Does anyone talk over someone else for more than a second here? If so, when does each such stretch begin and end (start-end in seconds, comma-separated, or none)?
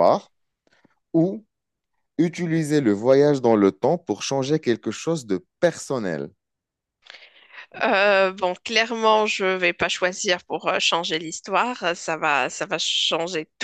none